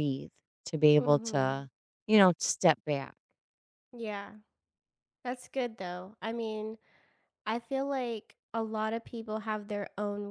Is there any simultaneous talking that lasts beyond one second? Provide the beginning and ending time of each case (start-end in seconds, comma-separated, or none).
none